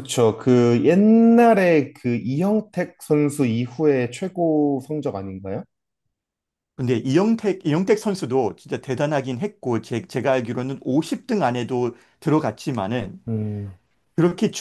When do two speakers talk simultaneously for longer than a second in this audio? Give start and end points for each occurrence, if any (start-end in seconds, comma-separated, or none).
none